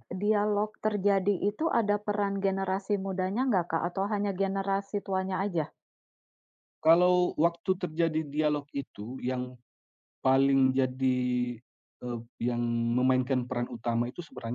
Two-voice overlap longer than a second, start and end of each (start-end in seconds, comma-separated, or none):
none